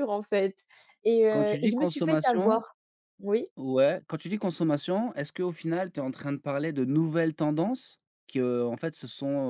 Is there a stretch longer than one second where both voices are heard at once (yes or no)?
yes